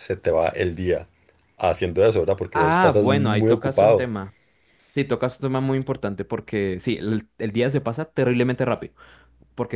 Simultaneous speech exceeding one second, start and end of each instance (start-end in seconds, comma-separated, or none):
2.5-4.1